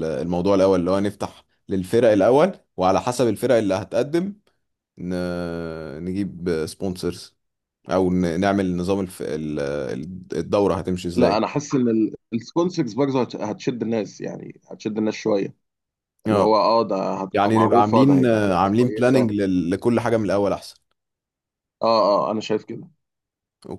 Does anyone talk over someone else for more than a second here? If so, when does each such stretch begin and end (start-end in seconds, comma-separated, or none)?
17.3-19.3